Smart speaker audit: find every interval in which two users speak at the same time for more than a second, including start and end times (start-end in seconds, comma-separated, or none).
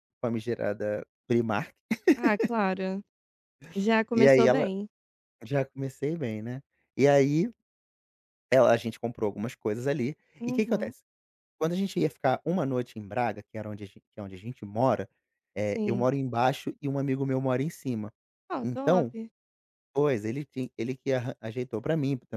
none